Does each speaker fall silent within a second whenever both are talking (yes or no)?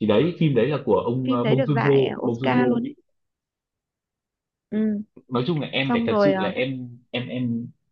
no